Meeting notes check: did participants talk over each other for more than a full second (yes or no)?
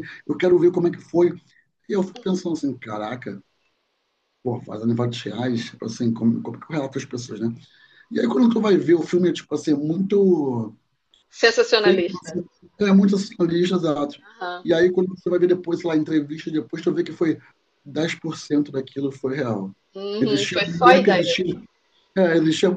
yes